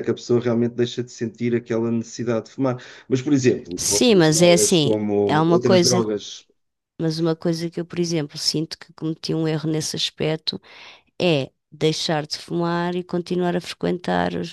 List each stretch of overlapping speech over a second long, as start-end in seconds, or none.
3.8-6.0